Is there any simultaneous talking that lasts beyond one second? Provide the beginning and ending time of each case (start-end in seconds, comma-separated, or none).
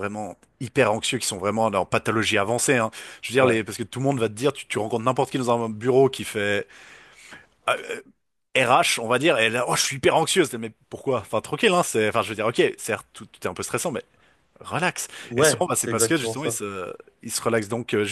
15.3-16.6